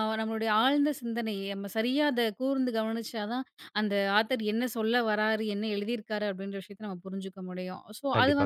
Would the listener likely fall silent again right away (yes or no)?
yes